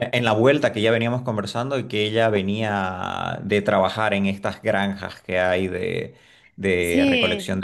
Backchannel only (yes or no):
yes